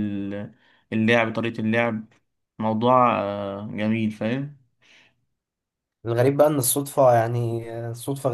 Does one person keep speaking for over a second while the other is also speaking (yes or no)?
no